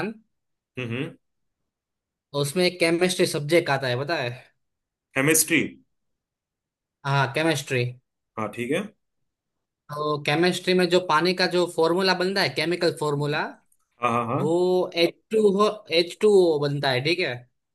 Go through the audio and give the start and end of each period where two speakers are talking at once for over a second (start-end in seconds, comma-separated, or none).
none